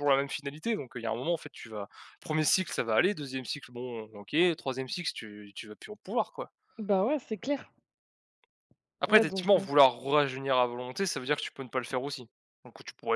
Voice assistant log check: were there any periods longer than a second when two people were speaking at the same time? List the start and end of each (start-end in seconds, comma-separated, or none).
none